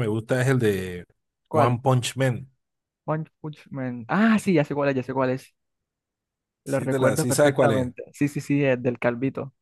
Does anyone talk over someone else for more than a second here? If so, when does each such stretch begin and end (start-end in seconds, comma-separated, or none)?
6.6-7.9